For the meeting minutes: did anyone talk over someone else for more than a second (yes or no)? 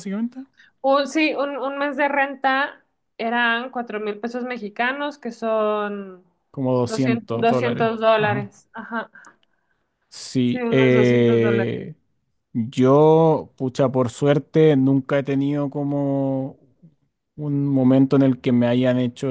yes